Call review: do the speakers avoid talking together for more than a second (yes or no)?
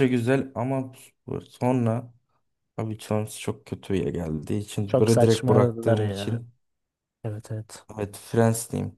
no